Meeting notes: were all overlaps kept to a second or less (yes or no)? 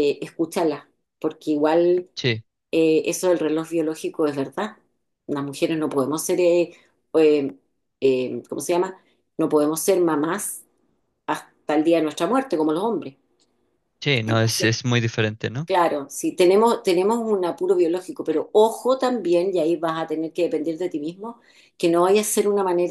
yes